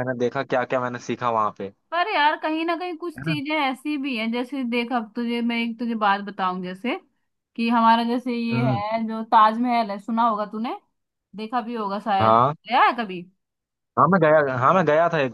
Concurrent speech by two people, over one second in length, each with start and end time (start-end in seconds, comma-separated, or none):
none